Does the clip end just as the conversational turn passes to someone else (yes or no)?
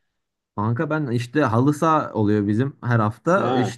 no